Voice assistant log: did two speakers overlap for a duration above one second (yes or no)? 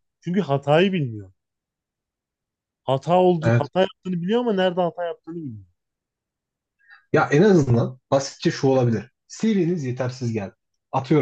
no